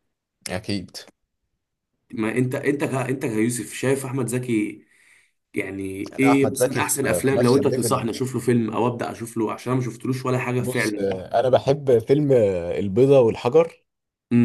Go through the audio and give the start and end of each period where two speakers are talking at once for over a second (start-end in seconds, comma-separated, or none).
6.2-8.0